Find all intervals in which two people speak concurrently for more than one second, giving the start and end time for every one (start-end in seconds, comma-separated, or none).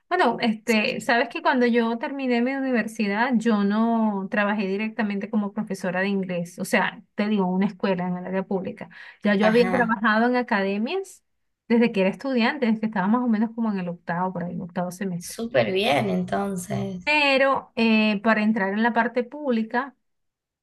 none